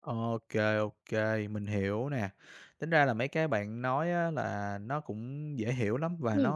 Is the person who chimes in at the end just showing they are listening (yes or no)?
yes